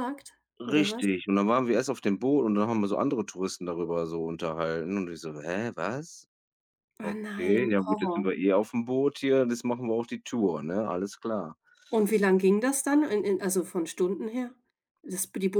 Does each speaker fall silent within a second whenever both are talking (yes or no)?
no